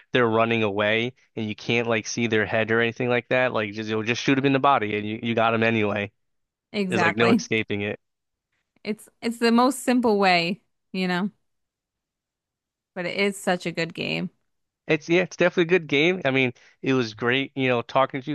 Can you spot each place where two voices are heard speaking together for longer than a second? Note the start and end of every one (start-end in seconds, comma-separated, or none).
none